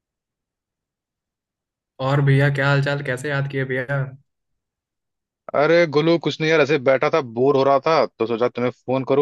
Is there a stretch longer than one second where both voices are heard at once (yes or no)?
no